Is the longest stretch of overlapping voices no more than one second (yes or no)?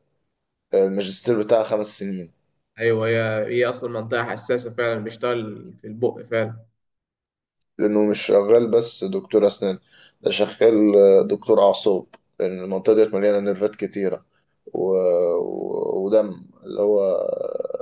yes